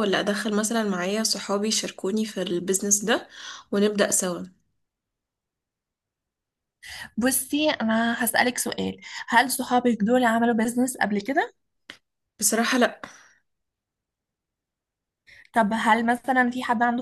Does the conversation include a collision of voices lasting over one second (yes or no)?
no